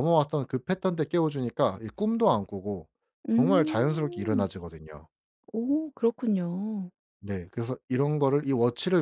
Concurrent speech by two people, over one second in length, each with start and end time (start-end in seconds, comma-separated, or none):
3.3-4.5